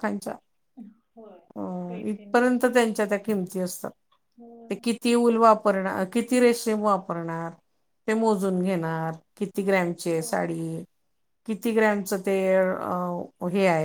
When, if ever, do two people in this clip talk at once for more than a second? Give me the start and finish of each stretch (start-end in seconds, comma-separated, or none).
none